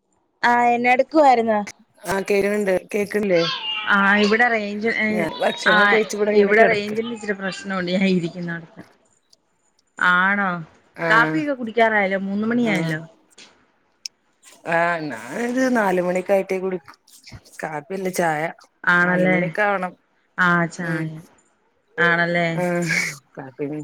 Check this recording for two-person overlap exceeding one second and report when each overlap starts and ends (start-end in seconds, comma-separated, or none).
none